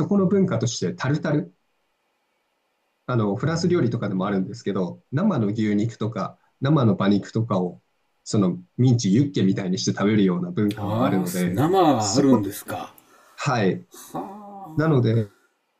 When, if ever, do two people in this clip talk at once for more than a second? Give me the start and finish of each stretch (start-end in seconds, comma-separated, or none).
10.8-12.5